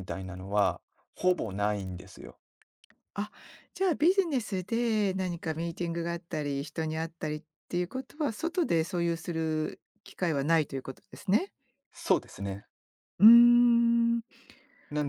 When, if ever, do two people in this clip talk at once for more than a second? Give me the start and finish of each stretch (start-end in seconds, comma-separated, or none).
none